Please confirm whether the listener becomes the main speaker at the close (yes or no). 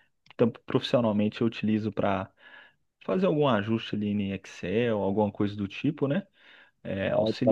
no